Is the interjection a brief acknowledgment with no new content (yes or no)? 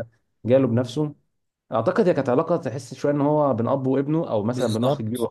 no